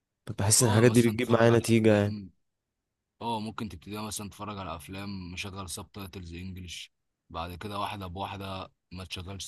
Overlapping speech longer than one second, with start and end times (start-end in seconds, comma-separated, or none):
0.6-2.2